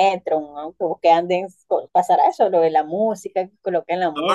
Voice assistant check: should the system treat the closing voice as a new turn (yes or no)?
yes